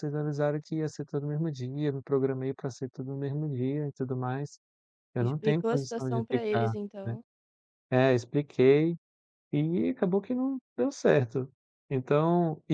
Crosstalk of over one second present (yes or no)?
yes